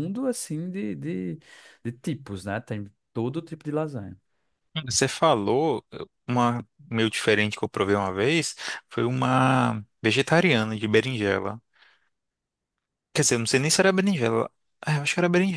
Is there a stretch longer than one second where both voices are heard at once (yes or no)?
no